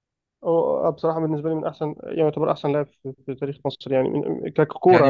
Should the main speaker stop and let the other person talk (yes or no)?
yes